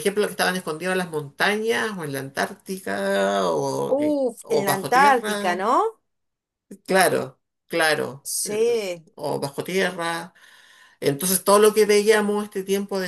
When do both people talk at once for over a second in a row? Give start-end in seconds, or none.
3.9-5.6